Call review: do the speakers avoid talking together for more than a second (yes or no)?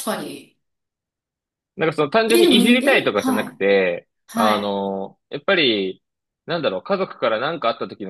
no